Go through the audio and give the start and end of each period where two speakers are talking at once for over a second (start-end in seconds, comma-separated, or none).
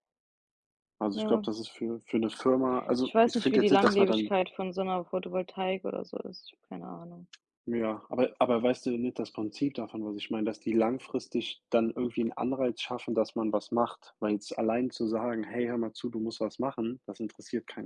3.0-4.3